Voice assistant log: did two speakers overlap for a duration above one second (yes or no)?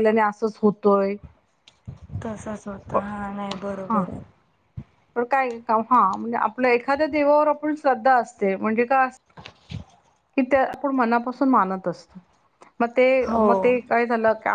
no